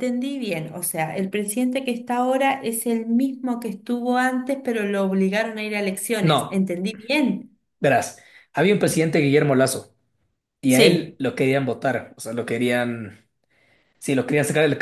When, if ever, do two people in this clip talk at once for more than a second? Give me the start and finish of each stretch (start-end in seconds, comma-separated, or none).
none